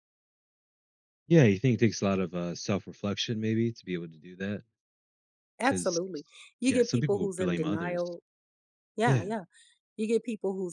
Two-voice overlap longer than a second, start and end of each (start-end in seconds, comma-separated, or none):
6.7-8.1